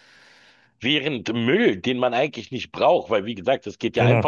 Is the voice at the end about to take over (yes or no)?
no